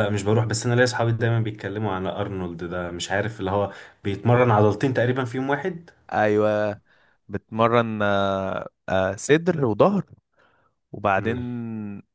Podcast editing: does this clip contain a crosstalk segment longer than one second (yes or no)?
no